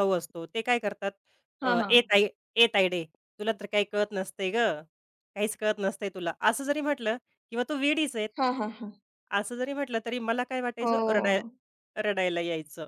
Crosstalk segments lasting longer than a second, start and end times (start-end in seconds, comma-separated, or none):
none